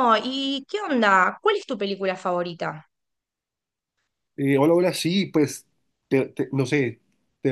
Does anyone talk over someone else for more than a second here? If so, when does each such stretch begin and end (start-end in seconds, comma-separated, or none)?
none